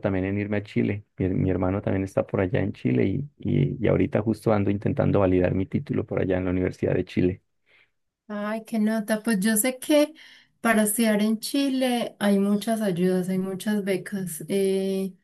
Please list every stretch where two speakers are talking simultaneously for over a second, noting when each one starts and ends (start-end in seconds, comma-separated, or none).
none